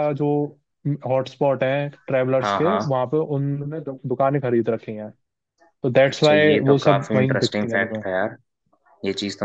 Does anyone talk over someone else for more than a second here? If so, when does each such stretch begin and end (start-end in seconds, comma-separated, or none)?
6.1-8.0